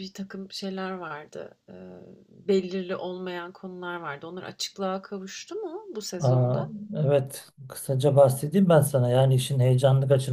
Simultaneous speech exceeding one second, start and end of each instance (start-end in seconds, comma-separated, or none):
none